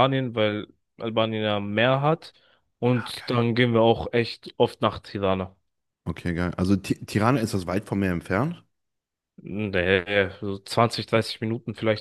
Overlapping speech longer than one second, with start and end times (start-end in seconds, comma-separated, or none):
none